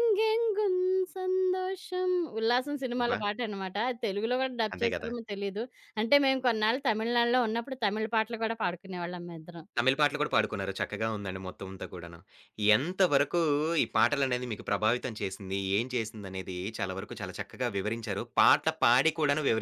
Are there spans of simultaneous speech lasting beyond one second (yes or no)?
no